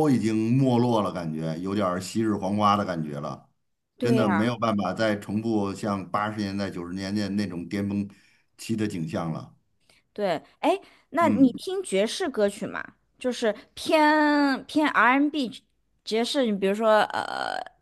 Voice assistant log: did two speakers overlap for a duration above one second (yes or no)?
no